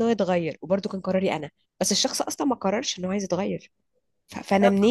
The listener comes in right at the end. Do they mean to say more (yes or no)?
no